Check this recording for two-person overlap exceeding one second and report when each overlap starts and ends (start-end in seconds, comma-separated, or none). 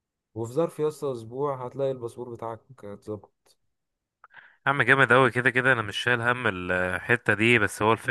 none